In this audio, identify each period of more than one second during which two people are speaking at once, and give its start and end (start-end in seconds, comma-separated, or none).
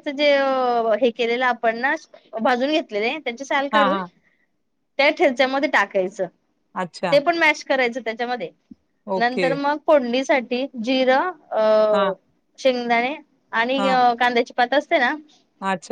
none